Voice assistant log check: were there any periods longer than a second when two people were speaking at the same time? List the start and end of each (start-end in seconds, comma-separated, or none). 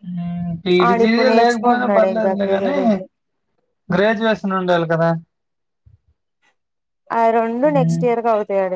0.9-2.8